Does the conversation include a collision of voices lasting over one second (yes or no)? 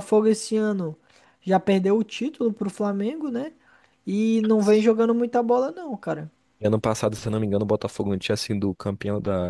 no